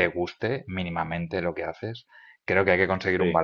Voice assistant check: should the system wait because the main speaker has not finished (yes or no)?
yes